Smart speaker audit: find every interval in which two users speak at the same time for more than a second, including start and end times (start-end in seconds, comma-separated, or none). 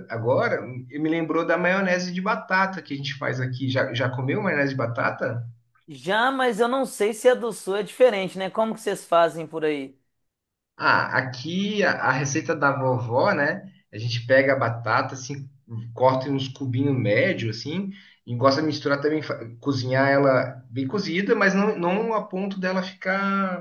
none